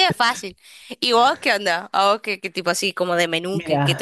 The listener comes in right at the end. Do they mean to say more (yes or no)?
yes